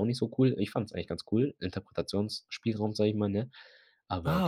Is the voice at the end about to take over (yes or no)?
yes